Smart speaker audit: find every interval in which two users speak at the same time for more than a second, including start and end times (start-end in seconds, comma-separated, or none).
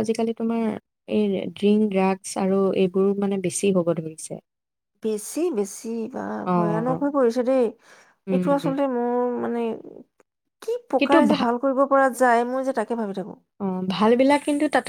none